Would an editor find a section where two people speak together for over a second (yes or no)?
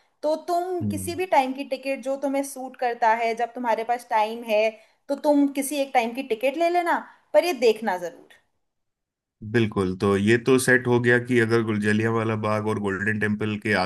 no